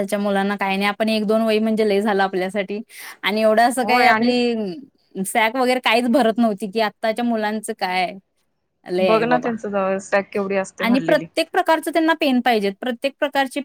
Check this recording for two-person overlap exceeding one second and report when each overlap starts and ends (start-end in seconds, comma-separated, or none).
none